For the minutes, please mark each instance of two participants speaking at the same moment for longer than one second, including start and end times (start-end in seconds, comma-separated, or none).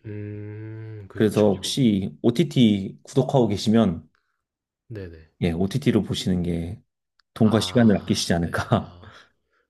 7.4-9.0